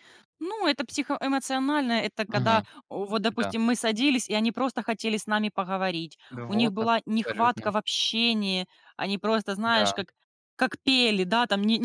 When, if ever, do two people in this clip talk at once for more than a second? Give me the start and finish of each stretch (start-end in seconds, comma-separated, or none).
6.3-7.7